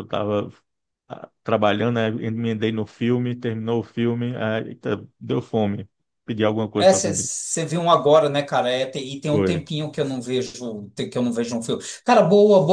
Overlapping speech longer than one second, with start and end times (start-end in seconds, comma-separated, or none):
none